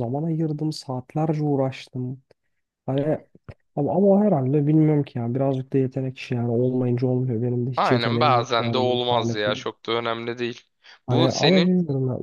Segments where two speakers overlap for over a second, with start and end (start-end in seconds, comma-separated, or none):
7.8-9.6